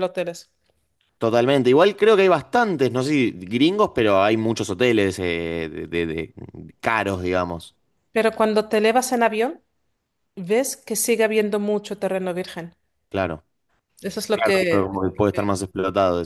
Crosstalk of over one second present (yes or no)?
no